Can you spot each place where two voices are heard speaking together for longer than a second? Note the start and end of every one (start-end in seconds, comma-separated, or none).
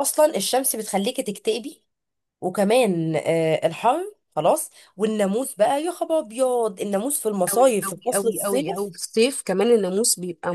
7.5-8.9